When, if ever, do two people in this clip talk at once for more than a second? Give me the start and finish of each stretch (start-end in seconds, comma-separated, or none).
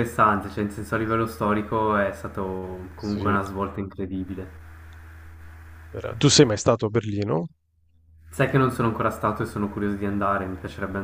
none